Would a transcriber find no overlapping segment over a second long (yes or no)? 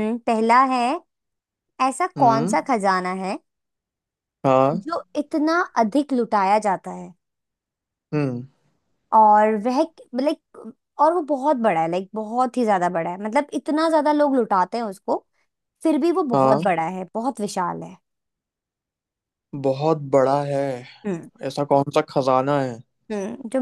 yes